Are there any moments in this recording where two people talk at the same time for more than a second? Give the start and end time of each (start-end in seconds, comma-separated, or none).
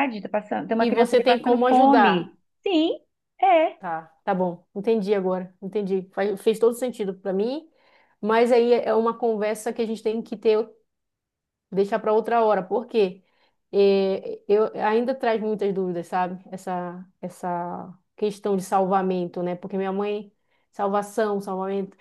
0.8-2.3